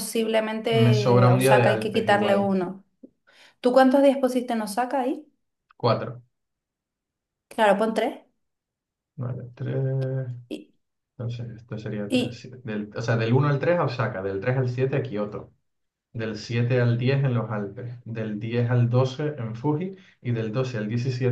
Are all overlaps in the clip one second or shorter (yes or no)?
no